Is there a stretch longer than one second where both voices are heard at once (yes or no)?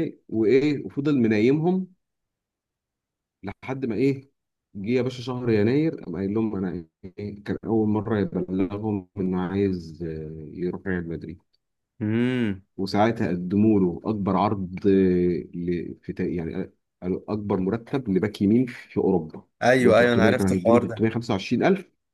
yes